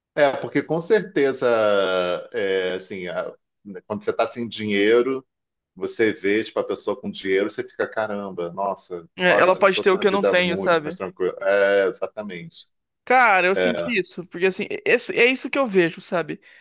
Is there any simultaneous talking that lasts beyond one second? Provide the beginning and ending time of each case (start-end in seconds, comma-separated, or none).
9.2-11.0